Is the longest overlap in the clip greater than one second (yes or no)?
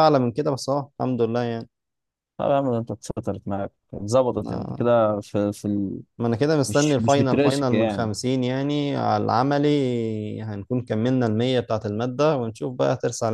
yes